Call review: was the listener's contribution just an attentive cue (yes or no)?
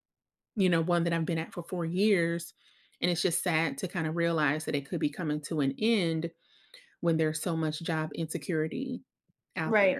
no